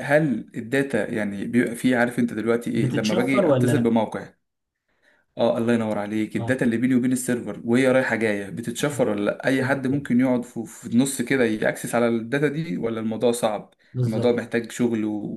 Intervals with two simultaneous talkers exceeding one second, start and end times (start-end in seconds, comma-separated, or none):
2.8-4.0